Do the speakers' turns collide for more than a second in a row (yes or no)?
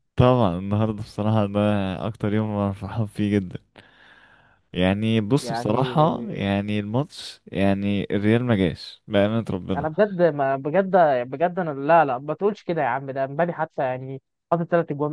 no